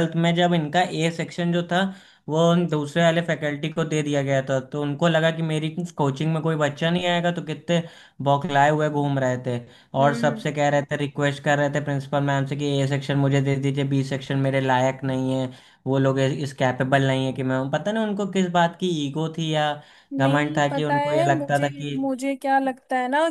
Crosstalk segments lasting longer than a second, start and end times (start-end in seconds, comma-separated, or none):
20.2-22.0